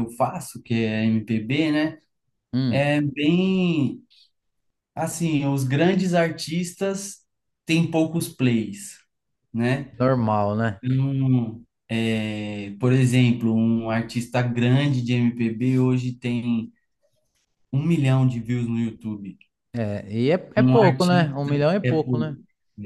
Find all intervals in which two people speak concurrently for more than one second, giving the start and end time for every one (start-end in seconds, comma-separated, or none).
20.6-22.4